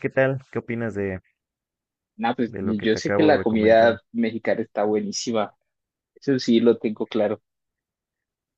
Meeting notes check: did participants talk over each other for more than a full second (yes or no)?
yes